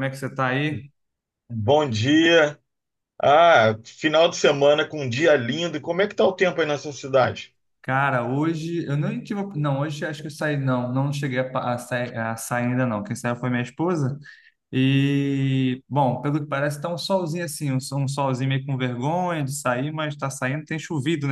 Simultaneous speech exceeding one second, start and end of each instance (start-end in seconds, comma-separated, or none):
none